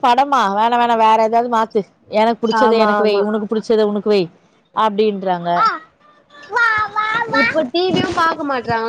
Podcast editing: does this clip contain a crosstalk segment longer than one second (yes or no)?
no